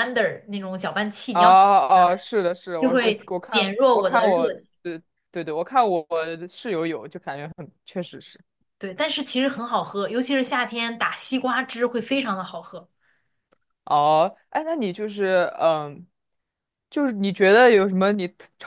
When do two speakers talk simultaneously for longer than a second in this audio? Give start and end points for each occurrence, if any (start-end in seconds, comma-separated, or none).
2.8-4.7